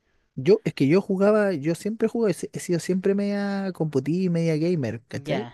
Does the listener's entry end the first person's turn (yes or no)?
no